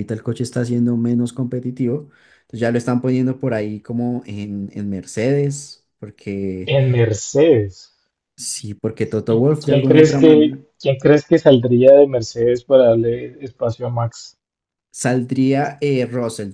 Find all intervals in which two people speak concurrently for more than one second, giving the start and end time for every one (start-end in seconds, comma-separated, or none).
9.3-10.6